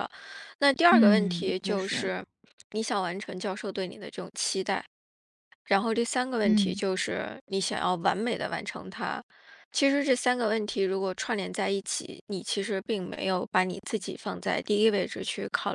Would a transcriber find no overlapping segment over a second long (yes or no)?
no